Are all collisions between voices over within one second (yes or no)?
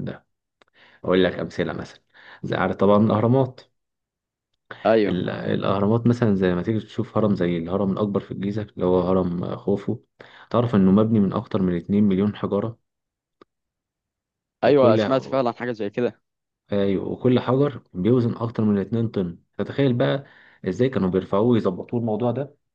yes